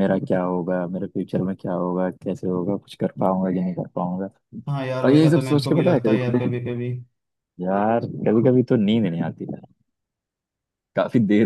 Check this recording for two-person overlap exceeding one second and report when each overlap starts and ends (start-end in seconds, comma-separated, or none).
5.0-6.7